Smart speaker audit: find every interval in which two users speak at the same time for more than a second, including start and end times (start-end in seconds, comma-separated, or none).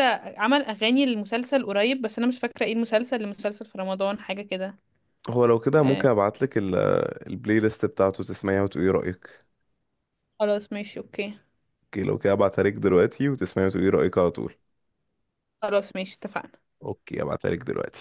none